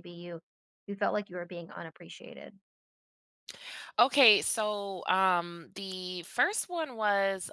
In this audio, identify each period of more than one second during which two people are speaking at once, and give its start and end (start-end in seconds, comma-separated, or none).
none